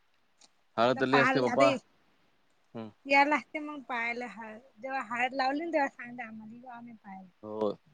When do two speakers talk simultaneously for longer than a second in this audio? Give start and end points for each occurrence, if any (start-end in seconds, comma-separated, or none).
none